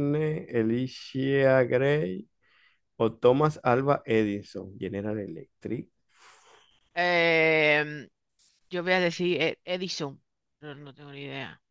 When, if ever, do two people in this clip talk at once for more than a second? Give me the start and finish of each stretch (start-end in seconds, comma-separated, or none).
none